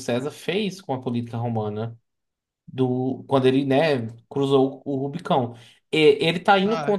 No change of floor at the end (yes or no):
yes